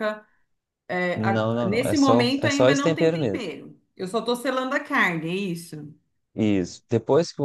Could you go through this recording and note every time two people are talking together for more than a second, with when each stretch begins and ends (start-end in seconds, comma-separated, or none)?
1.1-3.4